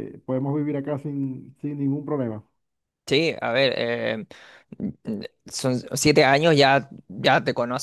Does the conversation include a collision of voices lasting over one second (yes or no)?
no